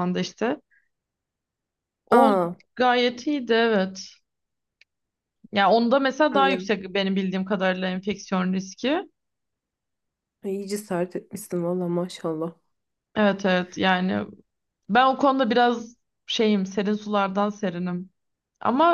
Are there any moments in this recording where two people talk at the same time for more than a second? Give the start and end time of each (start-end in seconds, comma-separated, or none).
none